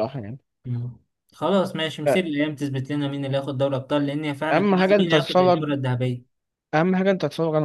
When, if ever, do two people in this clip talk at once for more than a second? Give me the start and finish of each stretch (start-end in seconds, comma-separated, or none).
4.5-5.7